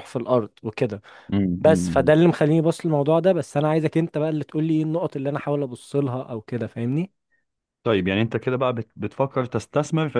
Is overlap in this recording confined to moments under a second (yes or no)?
yes